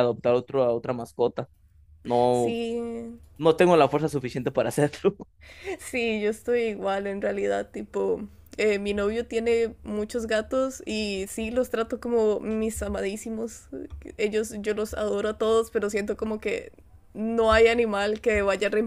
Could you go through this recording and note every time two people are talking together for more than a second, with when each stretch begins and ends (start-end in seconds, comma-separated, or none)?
none